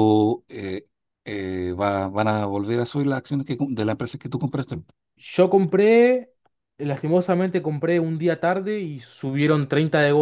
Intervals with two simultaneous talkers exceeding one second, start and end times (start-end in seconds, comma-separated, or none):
none